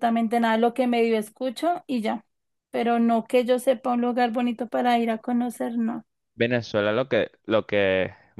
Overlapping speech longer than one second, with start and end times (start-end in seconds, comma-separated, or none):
none